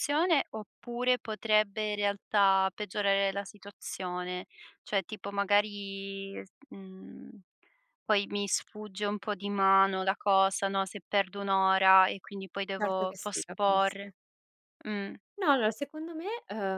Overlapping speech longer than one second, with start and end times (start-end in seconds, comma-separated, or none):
12.8-14.1